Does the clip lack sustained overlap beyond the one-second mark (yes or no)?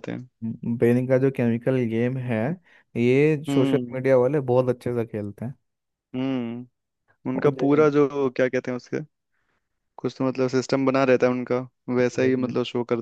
yes